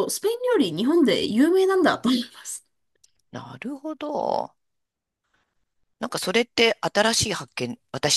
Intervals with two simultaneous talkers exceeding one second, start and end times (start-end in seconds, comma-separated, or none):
none